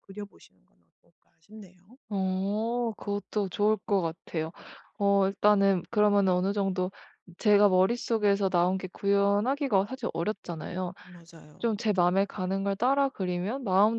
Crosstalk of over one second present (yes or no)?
no